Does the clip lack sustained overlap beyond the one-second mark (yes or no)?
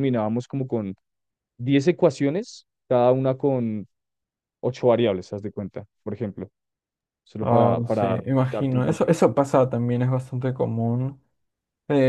no